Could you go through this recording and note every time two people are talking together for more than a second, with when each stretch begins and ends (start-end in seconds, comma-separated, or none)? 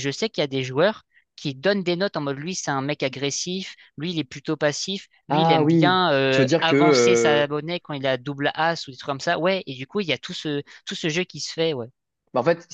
5.3-7.5